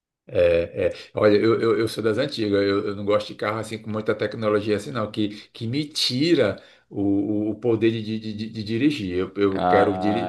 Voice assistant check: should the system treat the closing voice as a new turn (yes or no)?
yes